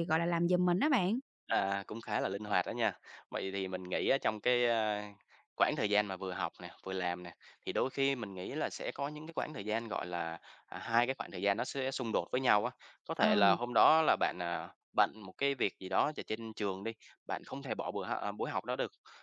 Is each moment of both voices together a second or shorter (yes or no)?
yes